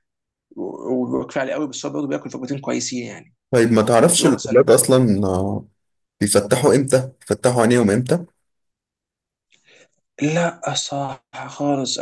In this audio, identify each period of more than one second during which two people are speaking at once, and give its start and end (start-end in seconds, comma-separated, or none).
none